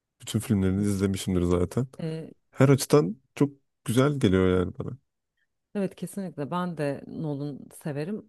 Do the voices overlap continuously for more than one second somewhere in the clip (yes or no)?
no